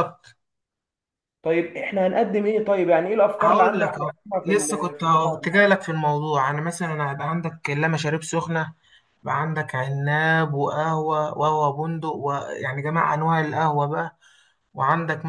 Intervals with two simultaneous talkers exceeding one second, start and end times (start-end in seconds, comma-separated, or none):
3.4-5.6